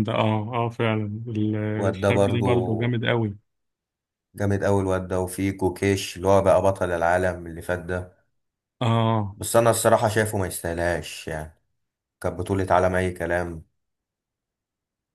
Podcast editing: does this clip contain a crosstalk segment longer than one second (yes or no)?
yes